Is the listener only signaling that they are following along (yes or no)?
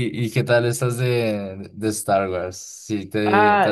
no